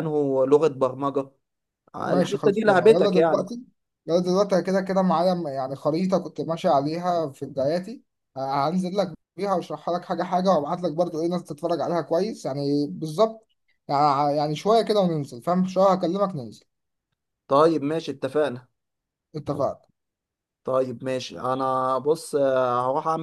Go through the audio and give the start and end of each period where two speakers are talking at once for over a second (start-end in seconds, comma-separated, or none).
2.0-3.4